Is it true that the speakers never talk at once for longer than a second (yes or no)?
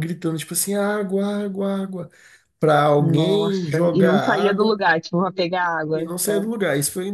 no